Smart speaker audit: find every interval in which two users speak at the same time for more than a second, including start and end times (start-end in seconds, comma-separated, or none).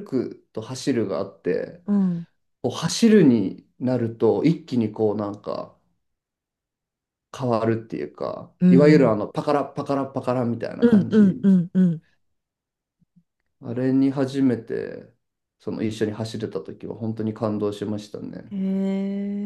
none